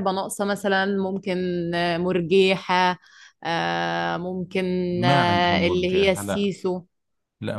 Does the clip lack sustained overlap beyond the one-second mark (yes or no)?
no